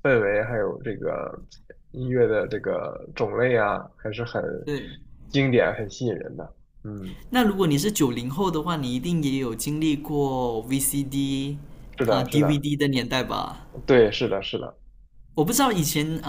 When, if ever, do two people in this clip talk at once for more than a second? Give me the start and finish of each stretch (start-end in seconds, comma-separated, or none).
none